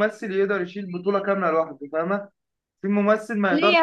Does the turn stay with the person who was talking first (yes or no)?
no